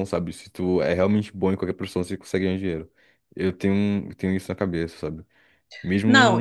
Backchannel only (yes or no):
no